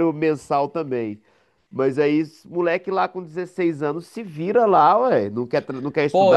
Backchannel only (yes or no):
no